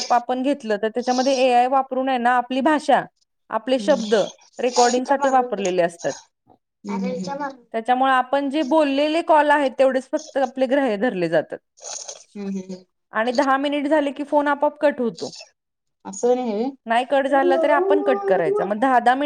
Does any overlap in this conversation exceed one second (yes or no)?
yes